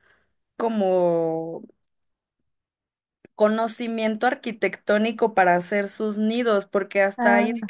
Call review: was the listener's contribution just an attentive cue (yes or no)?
yes